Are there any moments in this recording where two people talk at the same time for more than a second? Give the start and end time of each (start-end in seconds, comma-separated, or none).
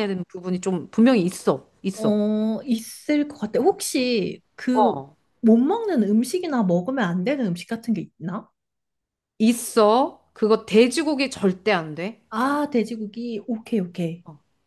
none